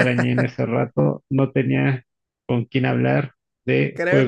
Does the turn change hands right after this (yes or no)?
yes